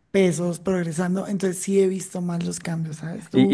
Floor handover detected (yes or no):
yes